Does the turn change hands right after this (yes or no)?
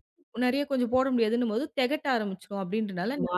yes